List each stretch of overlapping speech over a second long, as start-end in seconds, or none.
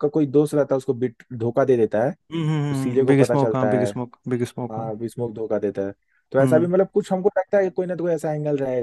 2.5-3.9